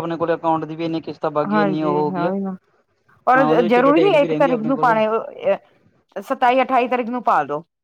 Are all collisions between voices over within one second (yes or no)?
no